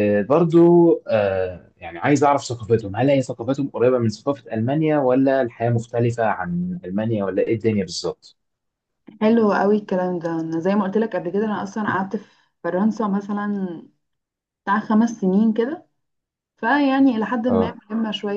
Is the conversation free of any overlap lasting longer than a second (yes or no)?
yes